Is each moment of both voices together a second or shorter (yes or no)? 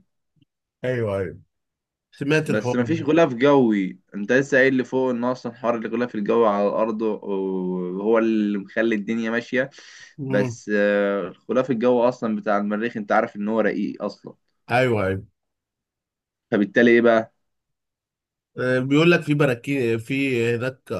yes